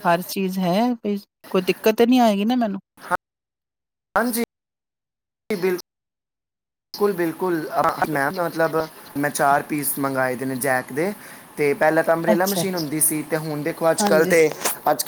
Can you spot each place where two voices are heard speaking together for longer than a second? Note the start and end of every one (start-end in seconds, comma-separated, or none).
none